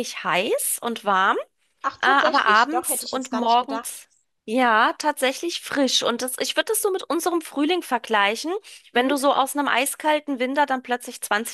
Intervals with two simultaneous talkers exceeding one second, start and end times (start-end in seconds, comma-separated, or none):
2.0-4.0